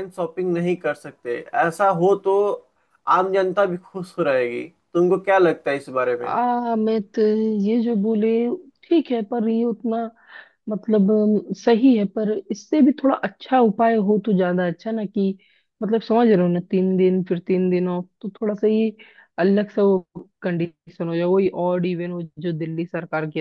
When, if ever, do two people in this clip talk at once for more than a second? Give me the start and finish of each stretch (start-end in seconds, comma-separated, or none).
none